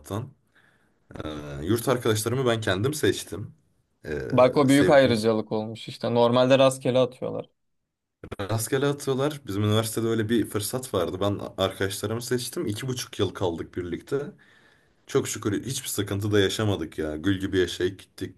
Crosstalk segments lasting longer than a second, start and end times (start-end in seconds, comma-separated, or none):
none